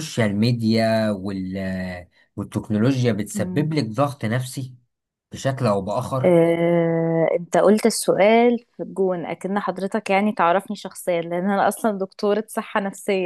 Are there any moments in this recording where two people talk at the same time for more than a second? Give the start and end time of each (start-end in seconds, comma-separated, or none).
none